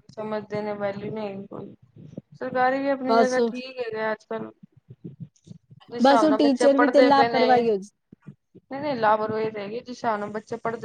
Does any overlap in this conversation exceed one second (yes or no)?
yes